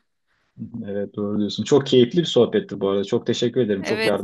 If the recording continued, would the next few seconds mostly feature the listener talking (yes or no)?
yes